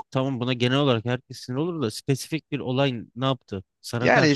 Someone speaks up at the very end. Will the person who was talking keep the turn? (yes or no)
no